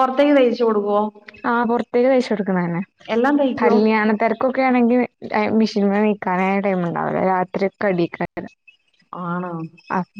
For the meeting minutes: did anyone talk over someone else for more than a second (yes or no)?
no